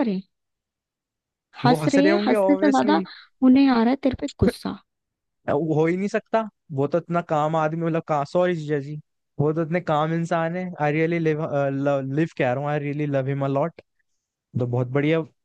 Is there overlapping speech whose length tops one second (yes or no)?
yes